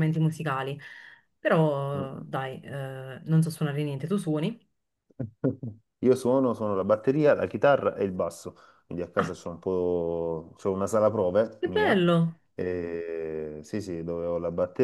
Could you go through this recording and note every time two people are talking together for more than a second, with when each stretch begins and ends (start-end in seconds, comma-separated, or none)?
none